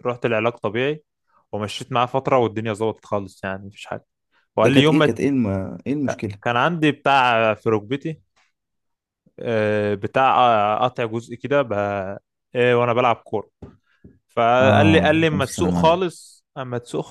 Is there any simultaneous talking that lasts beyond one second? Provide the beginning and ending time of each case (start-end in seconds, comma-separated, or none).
14.6-16.0